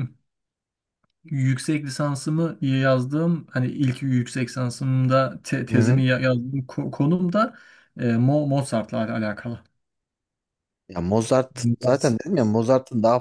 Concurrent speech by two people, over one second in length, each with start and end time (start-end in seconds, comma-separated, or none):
none